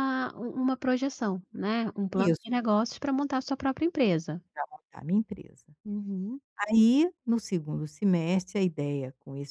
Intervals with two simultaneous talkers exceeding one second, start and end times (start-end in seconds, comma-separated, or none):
none